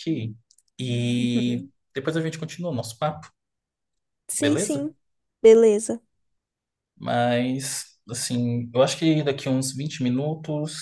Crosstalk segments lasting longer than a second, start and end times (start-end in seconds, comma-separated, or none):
none